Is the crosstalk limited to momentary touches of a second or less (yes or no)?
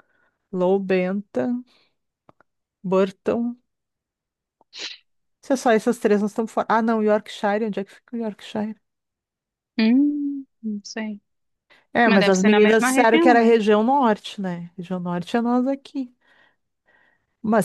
no